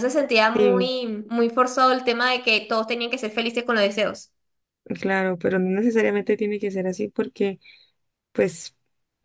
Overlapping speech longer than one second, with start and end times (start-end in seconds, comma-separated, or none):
none